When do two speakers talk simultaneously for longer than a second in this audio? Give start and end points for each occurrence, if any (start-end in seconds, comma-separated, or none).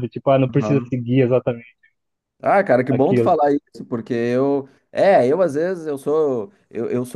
none